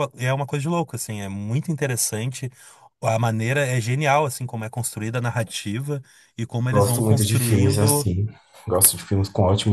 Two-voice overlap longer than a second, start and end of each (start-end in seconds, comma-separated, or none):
6.7-8.1